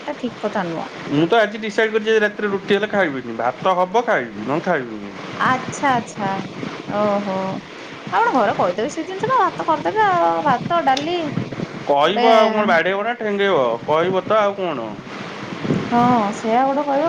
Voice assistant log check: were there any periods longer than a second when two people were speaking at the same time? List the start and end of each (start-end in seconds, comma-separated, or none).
none